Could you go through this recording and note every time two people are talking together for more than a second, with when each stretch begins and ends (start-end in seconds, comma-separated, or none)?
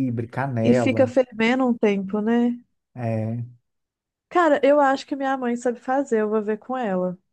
none